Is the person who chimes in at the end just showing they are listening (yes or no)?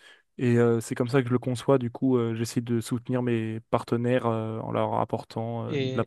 no